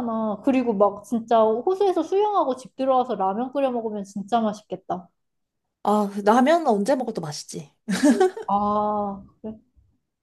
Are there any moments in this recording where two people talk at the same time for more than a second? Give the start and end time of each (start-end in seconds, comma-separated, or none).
none